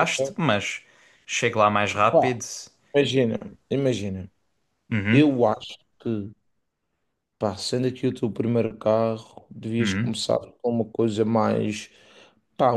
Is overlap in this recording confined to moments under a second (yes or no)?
yes